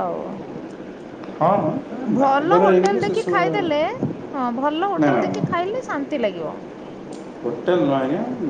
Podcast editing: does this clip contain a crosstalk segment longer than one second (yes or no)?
yes